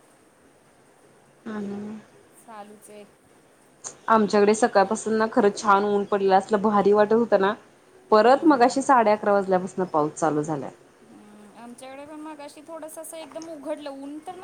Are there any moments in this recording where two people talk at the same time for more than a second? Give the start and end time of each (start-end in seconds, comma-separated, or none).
none